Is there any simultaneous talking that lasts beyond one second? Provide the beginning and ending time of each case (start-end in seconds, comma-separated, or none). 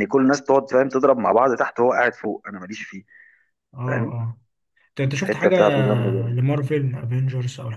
none